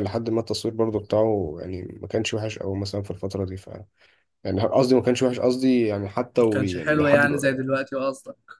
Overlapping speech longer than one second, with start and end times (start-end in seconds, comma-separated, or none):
6.3-7.7